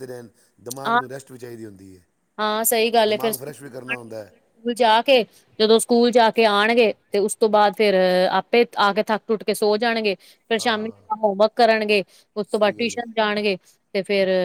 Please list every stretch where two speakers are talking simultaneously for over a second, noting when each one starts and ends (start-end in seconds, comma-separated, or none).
3.1-4.3